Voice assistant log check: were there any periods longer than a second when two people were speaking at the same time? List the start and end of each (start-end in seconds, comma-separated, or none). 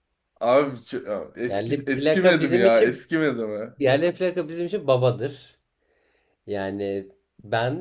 1.5-3.0